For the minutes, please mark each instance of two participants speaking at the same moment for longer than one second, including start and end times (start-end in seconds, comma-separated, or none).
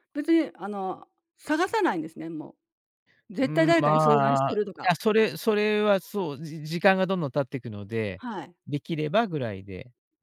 3.4-4.9